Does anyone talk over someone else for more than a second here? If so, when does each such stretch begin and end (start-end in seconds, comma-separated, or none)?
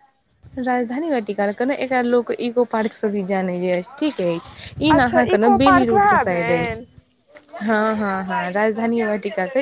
5.0-6.7